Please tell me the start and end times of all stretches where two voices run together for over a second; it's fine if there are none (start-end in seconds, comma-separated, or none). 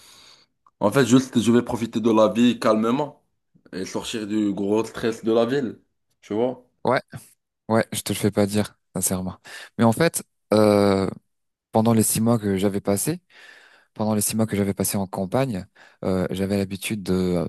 none